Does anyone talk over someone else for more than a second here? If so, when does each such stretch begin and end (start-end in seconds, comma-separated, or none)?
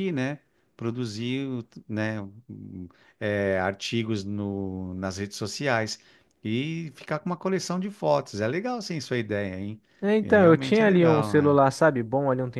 10.2-11.6